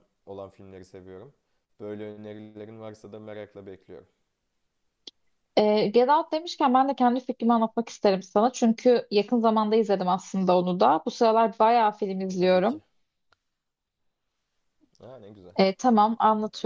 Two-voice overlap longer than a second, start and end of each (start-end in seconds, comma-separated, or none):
none